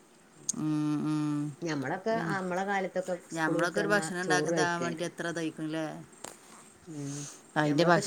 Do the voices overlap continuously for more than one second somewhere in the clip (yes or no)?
yes